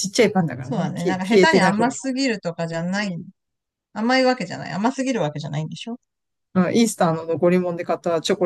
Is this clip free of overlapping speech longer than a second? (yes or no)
no